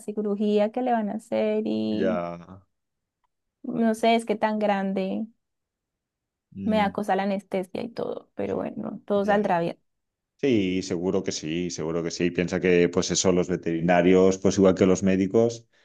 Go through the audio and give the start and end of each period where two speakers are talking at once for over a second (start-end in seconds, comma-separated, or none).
none